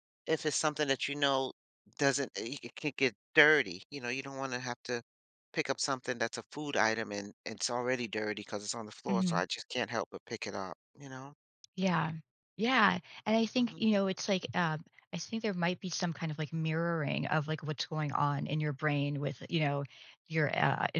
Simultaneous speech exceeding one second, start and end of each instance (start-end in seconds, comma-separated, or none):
none